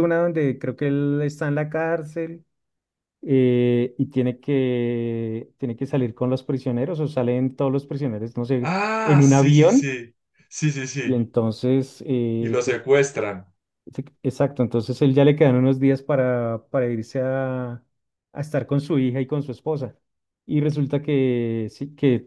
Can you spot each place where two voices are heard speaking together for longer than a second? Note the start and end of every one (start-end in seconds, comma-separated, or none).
8.6-10.0